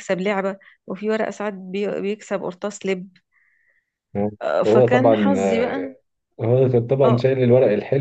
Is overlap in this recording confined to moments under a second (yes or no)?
no